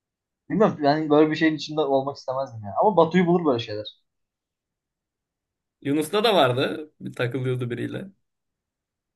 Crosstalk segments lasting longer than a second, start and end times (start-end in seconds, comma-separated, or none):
none